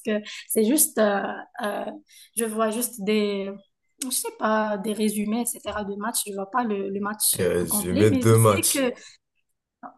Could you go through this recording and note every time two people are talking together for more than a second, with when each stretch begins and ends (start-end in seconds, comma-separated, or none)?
7.4-8.9